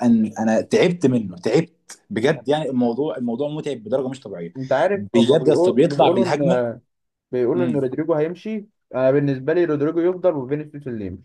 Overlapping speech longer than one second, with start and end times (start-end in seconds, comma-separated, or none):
5.0-6.6